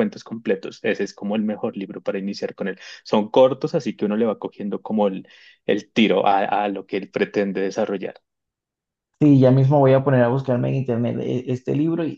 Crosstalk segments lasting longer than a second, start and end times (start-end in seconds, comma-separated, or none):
none